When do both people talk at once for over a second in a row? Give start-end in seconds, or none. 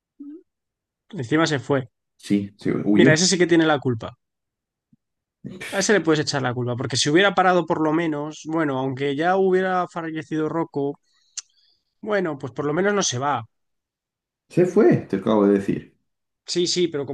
none